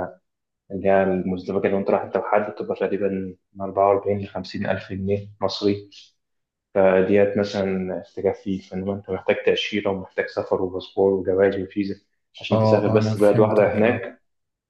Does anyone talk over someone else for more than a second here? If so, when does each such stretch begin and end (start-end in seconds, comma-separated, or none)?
12.5-14.1